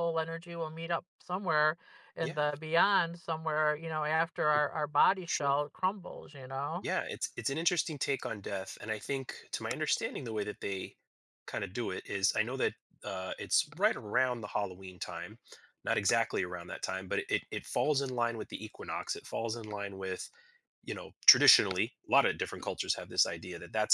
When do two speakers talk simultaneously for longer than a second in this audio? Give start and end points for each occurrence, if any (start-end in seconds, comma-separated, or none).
none